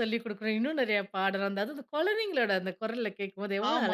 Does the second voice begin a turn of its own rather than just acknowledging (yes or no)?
yes